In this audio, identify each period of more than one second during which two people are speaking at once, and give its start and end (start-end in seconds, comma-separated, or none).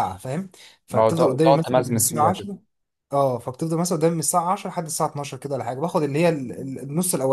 0.9-2.5